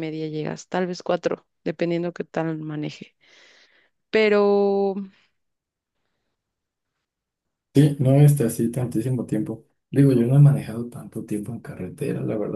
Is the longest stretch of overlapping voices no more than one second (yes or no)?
yes